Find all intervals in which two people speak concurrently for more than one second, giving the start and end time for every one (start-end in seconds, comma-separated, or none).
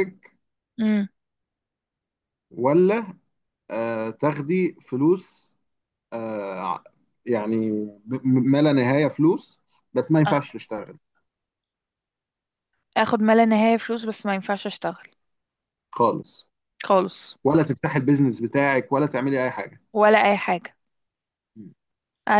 none